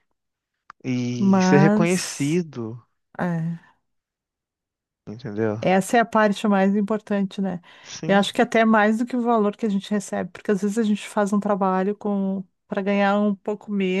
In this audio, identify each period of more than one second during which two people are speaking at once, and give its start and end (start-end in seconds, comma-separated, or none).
1.2-2.4